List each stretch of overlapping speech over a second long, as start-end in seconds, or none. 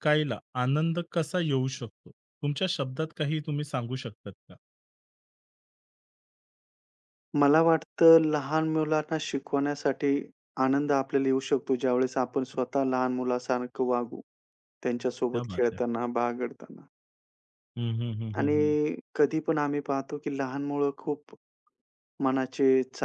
none